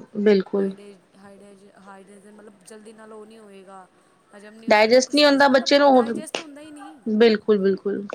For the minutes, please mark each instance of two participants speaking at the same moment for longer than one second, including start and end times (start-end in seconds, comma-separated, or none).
4.7-6.0